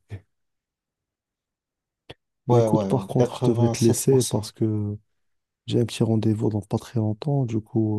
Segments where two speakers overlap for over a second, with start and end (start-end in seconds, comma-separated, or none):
2.5-4.5